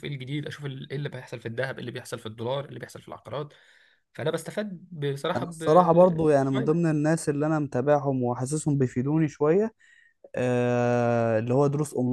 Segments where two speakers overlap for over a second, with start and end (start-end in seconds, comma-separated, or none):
5.4-6.9